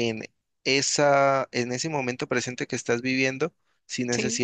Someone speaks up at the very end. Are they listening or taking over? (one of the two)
listening